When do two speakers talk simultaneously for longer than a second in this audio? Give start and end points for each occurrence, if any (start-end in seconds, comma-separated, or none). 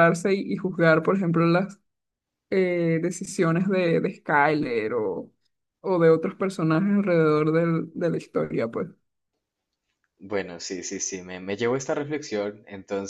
none